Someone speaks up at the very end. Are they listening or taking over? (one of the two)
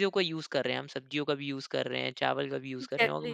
listening